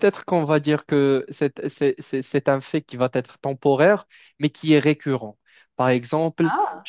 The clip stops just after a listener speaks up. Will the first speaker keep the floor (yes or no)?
yes